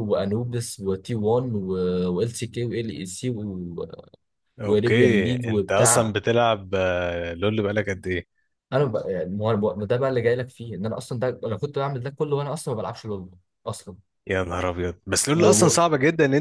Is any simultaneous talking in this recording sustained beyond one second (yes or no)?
yes